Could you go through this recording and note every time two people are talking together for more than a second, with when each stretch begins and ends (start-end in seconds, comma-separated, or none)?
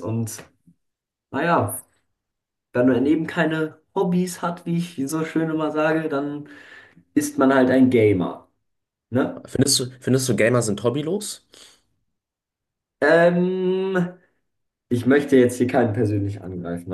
none